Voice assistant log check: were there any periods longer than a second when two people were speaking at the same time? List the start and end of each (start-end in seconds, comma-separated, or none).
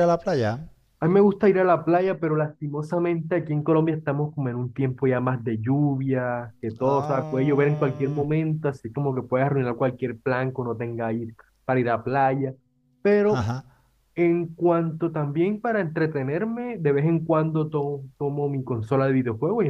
6.8-8.2